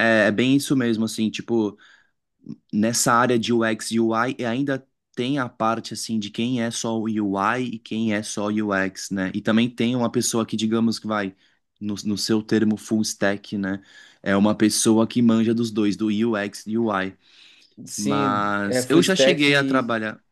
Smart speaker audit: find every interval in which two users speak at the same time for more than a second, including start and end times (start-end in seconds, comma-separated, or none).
17.9-19.4